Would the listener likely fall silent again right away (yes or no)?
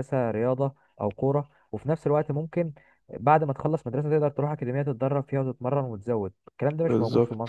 no